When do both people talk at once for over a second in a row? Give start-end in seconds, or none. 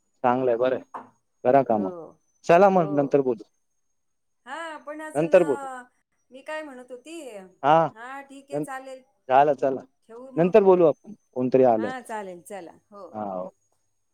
none